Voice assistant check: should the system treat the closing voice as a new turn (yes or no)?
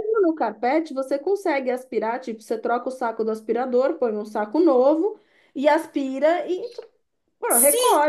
yes